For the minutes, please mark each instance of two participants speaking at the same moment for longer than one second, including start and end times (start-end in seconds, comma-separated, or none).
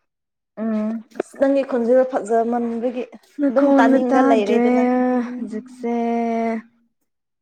3.5-4.8